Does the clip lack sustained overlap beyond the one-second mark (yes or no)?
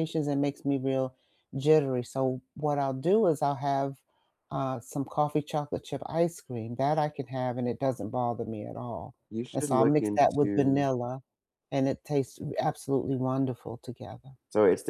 no